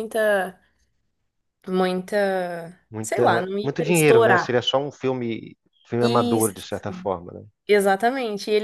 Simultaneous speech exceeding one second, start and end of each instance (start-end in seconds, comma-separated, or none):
3.0-4.6